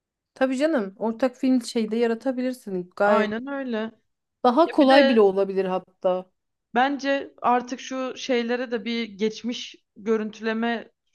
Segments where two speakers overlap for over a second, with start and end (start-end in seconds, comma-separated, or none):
none